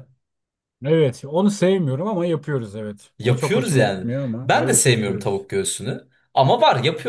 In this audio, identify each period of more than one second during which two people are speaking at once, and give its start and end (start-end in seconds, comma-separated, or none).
3.2-5.5